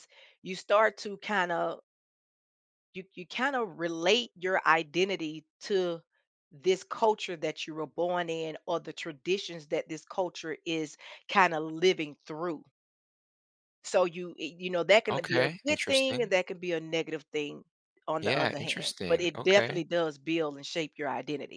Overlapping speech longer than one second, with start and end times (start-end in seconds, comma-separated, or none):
15.1-16.3, 18.2-19.8